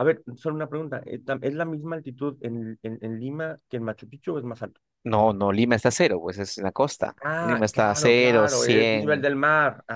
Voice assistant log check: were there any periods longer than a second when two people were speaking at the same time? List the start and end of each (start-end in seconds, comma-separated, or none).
7.2-9.3